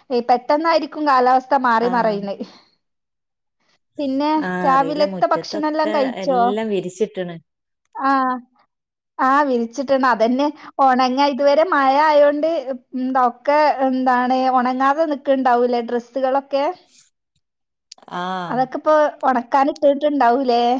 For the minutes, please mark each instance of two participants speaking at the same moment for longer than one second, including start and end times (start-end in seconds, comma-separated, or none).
4.7-6.1